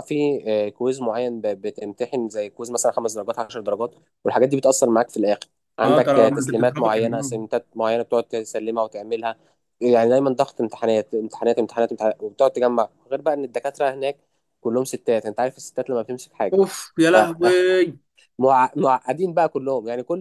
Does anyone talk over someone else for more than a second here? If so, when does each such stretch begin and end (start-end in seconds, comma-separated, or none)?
5.8-7.3